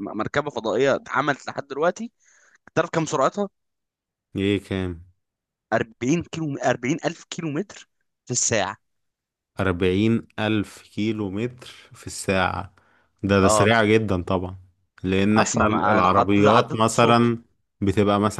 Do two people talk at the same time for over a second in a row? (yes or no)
yes